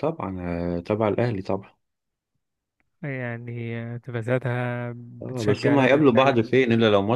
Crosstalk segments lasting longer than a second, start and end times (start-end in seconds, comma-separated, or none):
5.2-6.6